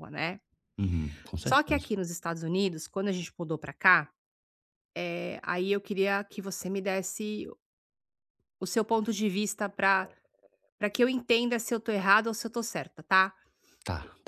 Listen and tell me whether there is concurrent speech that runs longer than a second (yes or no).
no